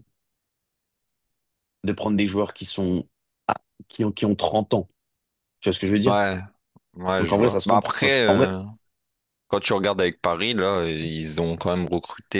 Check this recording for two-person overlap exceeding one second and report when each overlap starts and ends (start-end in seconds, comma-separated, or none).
7.2-8.5